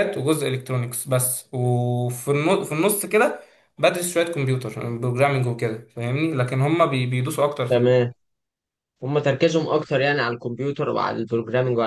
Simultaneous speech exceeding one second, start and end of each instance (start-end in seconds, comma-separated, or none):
none